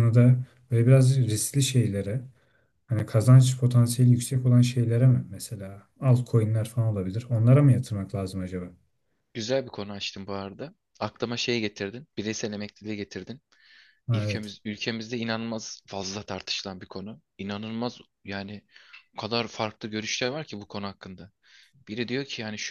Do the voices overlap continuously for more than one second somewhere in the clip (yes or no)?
no